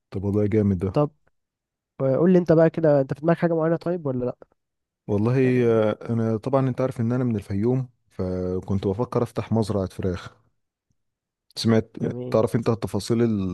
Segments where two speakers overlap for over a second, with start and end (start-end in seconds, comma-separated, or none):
none